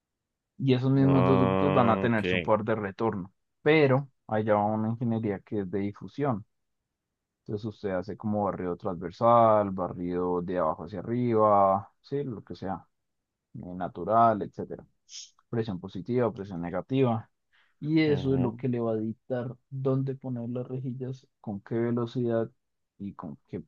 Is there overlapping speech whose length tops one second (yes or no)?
yes